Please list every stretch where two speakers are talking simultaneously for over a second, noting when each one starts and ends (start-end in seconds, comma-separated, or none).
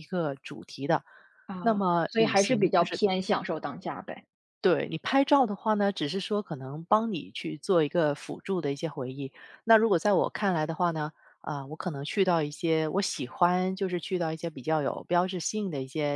1.6-3.0